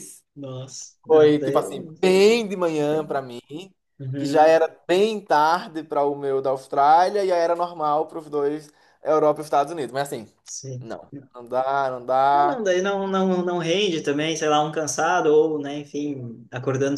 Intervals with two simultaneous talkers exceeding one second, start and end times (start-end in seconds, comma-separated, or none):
none